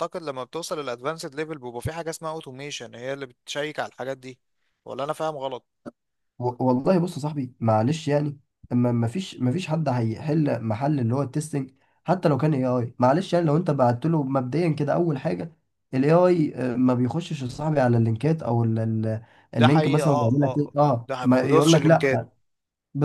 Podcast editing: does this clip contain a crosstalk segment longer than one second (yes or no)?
yes